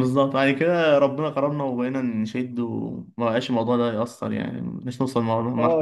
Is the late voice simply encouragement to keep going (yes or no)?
no